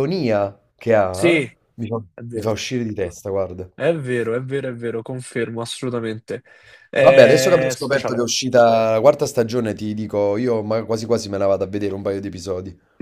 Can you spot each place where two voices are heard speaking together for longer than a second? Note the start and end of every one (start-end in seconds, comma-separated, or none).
7.0-8.3